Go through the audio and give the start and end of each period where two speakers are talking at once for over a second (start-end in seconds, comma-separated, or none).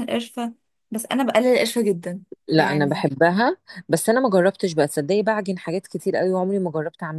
none